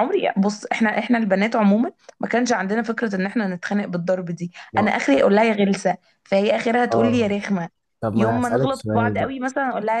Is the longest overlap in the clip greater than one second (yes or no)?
yes